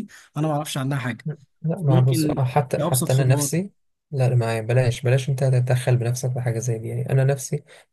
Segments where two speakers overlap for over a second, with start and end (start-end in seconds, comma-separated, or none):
1.9-3.5